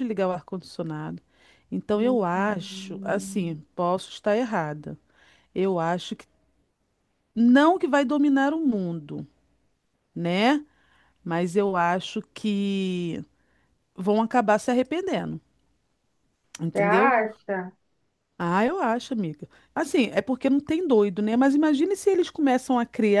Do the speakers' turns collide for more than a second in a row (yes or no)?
yes